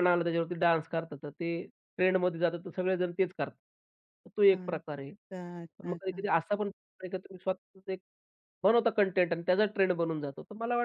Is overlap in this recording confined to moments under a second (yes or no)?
yes